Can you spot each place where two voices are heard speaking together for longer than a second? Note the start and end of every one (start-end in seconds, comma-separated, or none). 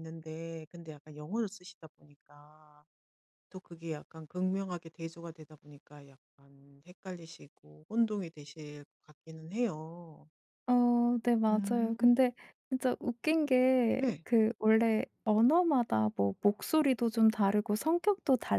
none